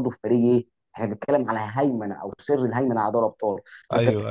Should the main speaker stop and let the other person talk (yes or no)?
no